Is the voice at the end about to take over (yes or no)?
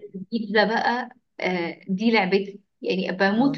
no